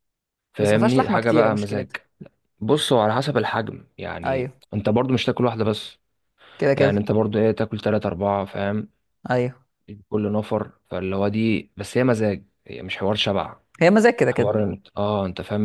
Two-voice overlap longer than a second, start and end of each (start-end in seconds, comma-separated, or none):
0.6-1.9